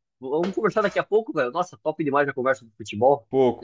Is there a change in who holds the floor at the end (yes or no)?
yes